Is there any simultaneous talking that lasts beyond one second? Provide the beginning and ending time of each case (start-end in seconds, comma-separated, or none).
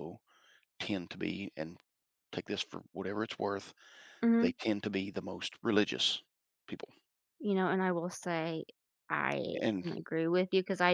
none